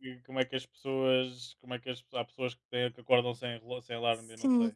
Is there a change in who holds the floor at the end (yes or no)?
yes